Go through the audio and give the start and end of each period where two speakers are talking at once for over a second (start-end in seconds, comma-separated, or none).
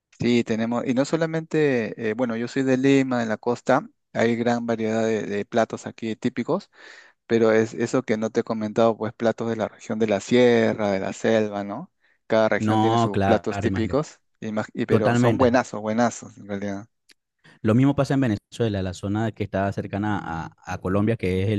12.6-14.0